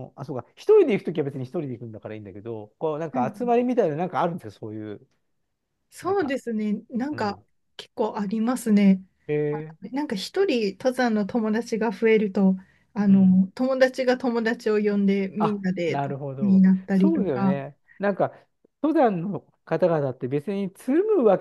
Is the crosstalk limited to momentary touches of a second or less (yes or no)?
no